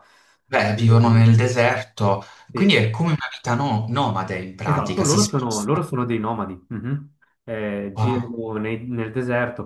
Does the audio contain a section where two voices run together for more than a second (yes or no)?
yes